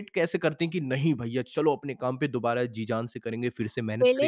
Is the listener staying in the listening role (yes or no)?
no